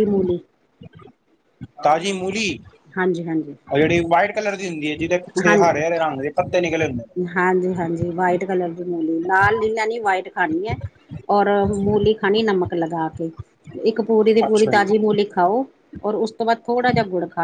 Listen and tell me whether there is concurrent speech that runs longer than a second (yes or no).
no